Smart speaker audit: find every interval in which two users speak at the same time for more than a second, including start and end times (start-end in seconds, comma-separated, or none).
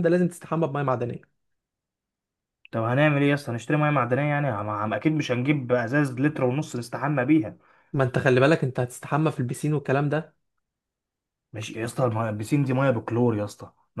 none